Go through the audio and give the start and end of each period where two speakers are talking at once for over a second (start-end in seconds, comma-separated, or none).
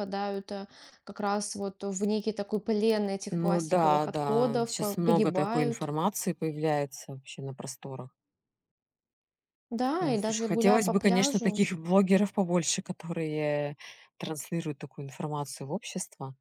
3.3-5.9, 10.0-11.6